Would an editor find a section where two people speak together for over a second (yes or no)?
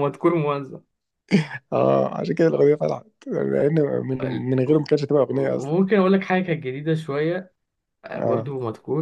no